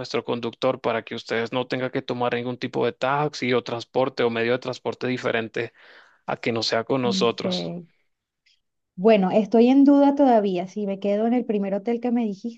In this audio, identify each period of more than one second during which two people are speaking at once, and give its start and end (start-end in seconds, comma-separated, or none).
none